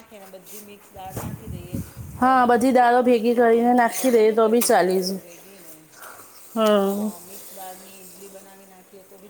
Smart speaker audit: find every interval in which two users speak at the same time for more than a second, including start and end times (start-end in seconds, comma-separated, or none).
2.3-4.3